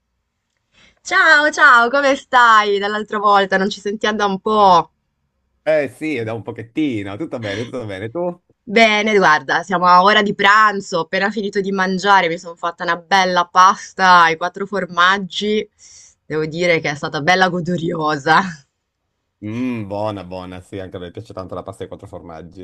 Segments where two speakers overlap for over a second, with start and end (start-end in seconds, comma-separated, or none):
none